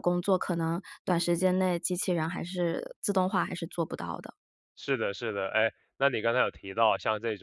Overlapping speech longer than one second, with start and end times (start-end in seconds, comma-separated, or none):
none